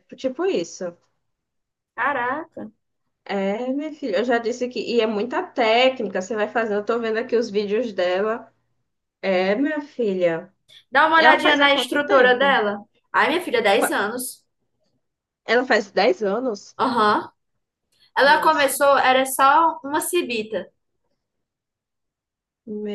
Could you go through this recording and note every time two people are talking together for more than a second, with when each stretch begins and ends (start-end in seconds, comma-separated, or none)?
11.2-12.6